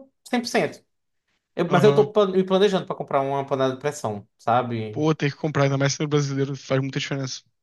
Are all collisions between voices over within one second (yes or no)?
yes